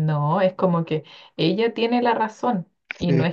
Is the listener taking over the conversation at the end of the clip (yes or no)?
no